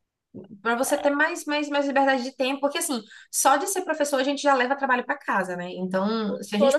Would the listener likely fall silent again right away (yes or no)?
yes